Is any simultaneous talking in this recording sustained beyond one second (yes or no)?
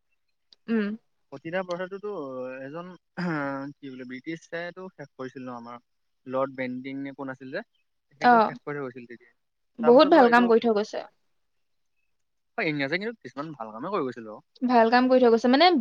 no